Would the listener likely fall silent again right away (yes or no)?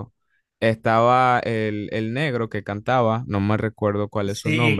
no